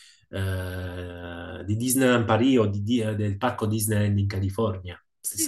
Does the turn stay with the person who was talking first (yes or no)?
no